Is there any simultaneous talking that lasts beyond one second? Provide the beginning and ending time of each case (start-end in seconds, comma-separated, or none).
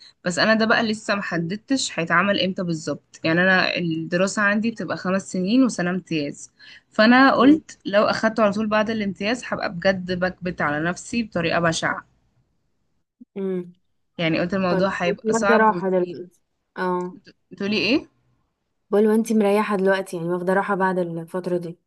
14.7-16.2